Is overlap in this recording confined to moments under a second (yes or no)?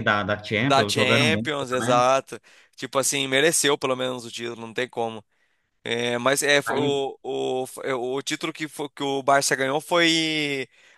no